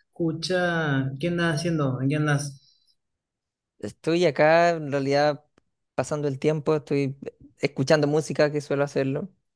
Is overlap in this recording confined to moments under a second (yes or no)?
yes